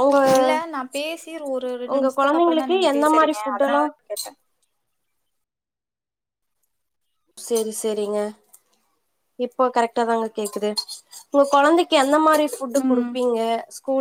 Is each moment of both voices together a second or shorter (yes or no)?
no